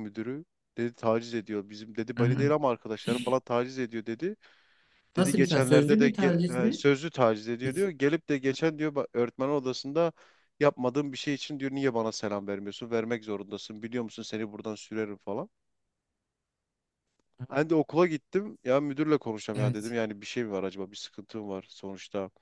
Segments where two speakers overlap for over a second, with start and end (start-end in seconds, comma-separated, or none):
5.2-6.8